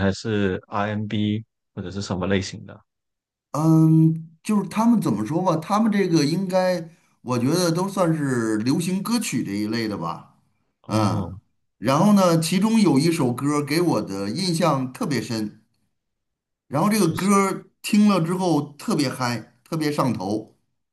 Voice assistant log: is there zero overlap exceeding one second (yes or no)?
yes